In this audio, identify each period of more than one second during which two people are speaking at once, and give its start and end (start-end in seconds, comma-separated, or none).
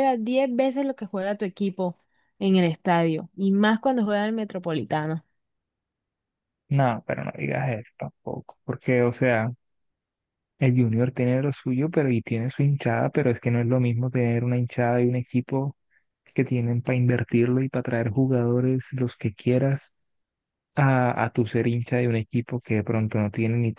none